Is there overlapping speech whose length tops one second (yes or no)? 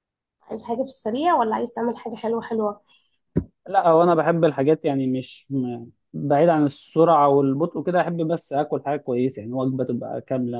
no